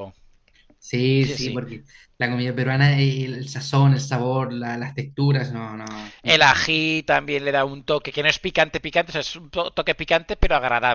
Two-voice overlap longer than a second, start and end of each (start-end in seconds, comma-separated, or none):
none